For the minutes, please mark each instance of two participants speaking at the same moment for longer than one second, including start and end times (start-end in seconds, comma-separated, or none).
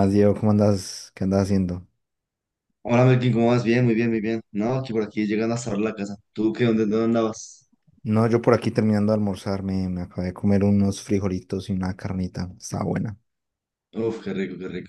none